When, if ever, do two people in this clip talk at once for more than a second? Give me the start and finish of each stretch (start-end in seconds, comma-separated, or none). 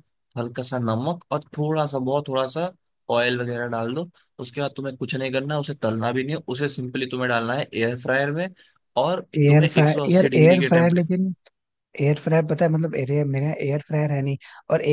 9.4-11.1